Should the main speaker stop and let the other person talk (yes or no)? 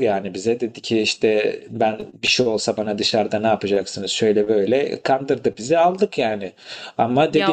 no